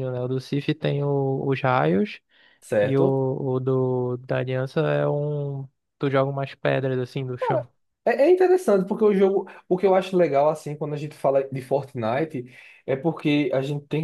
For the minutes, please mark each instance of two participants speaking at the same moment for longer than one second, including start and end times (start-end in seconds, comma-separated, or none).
none